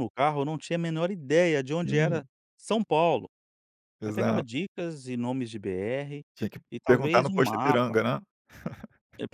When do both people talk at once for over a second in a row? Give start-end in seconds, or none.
6.7-8.0